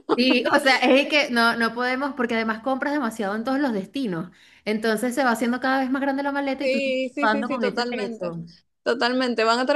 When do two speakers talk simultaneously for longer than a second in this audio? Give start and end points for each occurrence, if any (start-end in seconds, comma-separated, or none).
6.6-8.3